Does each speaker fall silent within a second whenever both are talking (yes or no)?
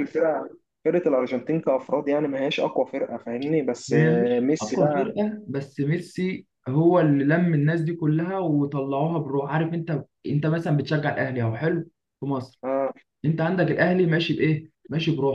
no